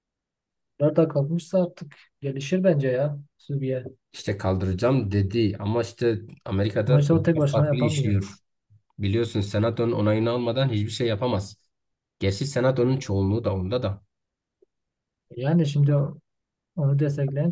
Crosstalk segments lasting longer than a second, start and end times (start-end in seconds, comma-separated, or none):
6.8-8.2